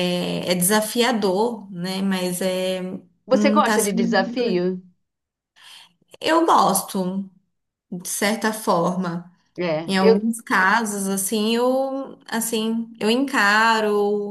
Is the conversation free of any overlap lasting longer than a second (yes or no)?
no